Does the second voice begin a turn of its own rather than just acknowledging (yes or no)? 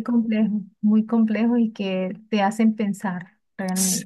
yes